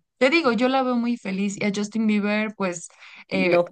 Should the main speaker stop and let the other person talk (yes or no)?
no